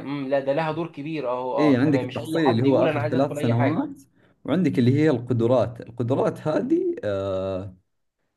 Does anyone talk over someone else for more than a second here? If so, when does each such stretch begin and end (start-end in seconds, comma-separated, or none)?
1.6-3.9